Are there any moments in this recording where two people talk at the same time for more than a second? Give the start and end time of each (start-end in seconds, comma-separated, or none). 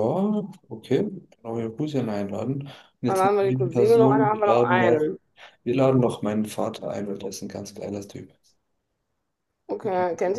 3.1-5.1